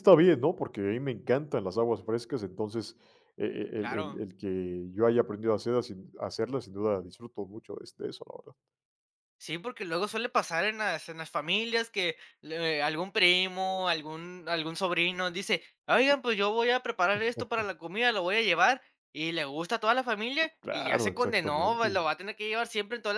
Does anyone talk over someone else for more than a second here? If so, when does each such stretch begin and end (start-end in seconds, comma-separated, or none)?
20.6-21.9